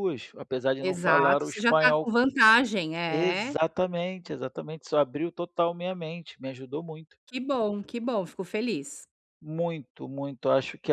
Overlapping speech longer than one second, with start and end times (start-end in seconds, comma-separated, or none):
0.8-2.1